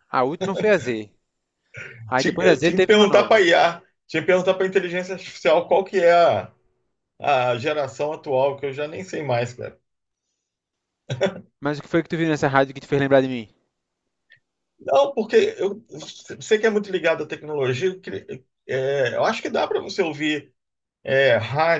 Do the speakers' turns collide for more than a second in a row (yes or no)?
yes